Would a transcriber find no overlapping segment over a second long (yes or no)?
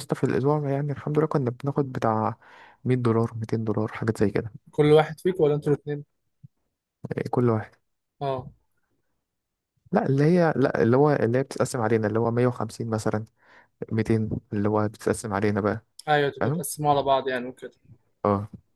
yes